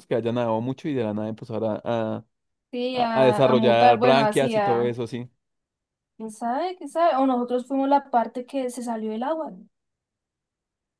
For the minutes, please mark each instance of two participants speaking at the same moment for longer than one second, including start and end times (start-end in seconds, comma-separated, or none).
2.9-5.0